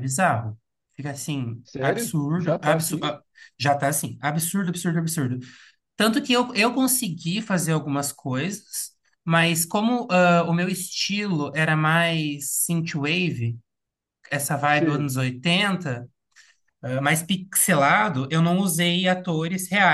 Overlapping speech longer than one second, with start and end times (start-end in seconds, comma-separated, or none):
1.6-3.1